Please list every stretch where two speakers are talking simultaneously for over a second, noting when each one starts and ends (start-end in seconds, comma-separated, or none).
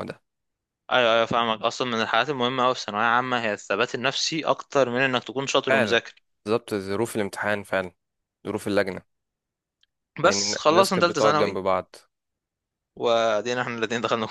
10.2-11.6